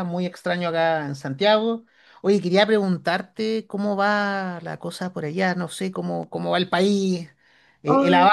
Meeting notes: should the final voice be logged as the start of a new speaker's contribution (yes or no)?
no